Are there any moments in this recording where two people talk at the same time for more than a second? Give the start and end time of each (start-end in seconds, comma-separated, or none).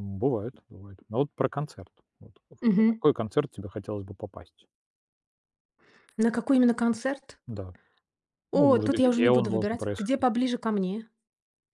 8.5-10.2